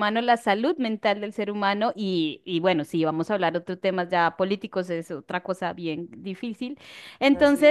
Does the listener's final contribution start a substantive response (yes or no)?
no